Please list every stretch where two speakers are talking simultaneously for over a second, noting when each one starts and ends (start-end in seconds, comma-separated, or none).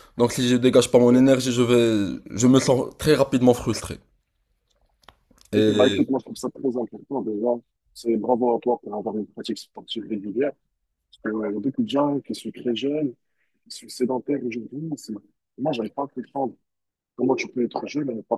none